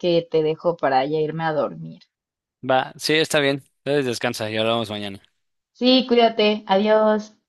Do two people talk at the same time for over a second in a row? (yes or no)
no